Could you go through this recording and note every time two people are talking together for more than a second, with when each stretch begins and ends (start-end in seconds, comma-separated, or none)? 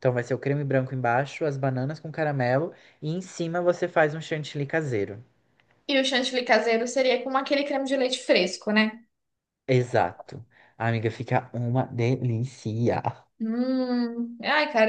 none